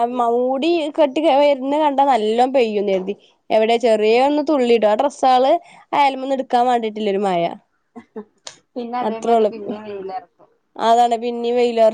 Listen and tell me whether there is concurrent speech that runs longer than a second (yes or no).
no